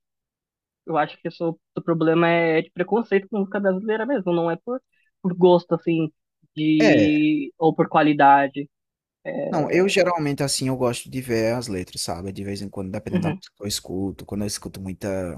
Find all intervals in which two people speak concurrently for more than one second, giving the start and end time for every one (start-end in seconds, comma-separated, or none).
none